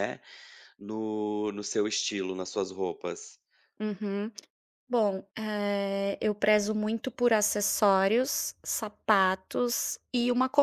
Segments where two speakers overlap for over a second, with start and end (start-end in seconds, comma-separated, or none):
none